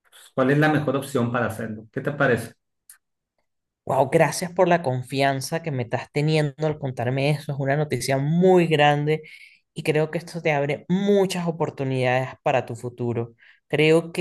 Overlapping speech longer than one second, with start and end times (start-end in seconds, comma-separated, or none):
none